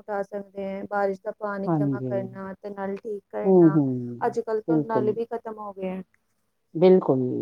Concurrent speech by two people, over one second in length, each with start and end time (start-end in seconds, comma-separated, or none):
none